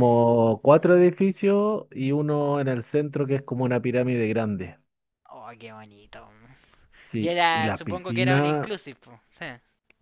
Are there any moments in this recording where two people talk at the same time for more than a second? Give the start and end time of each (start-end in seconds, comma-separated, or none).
7.2-8.7